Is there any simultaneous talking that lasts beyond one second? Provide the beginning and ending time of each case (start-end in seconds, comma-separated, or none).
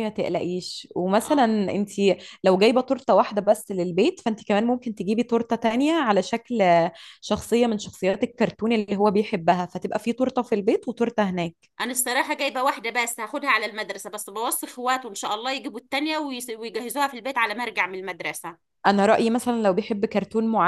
none